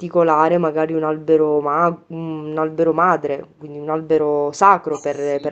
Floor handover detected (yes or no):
yes